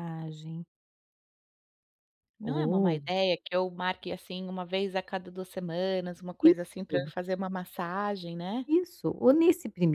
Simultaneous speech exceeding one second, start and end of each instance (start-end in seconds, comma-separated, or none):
none